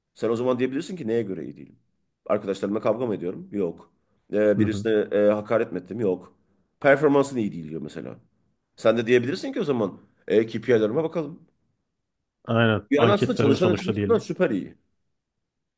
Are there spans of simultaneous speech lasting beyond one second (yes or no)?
yes